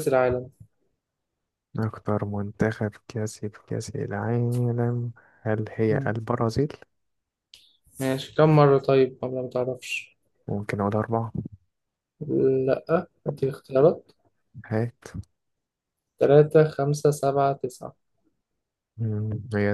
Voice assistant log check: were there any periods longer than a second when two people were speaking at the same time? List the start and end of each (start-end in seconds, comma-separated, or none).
none